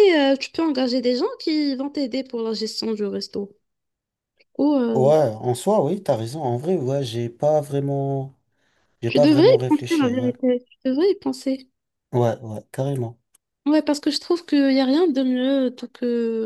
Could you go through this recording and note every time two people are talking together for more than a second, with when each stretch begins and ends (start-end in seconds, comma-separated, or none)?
9.1-10.3